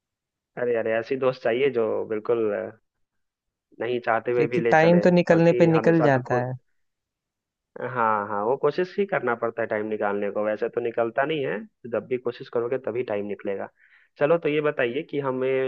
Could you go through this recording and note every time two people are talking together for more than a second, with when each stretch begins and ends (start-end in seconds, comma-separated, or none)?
4.3-6.4